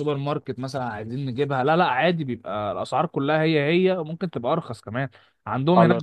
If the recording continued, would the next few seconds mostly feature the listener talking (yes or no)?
no